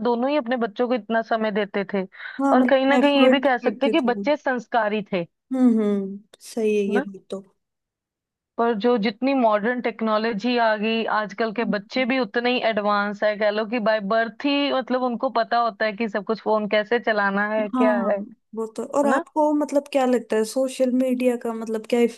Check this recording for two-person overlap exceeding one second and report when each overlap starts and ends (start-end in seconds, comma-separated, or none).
2.5-4.2